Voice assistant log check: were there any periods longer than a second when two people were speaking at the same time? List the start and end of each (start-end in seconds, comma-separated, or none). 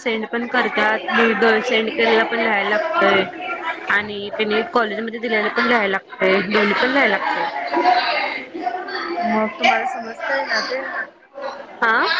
none